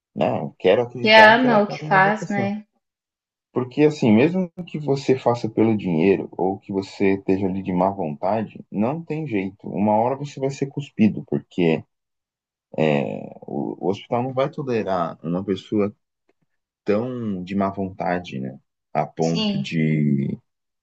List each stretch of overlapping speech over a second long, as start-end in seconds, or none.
1.0-2.5